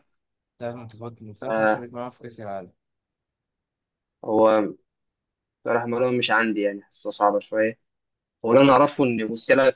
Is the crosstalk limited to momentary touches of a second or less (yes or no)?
yes